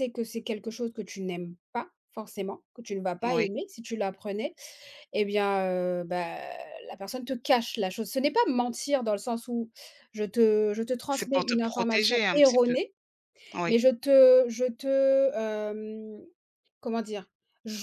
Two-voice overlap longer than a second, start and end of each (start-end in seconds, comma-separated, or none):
11.1-12.7